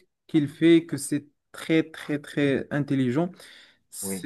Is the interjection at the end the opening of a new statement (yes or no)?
no